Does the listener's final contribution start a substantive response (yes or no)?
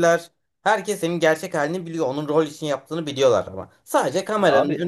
no